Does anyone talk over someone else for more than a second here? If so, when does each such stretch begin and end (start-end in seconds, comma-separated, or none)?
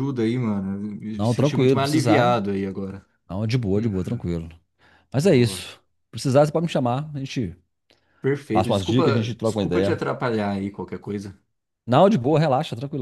1.1-2.4, 8.5-10.0